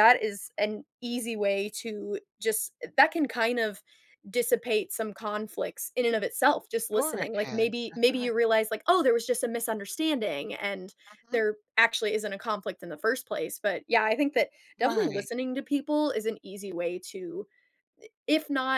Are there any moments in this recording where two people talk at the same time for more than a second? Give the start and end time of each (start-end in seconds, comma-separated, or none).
6.9-8.3